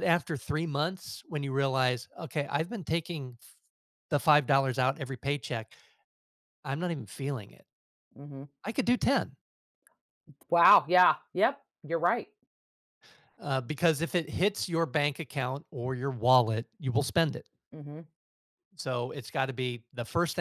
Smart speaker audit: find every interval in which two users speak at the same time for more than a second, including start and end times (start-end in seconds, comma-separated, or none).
none